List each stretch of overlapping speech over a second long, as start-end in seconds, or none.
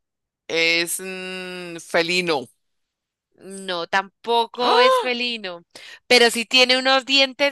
none